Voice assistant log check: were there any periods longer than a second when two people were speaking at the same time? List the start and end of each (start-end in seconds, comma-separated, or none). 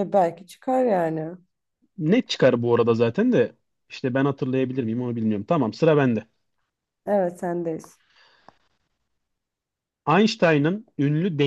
none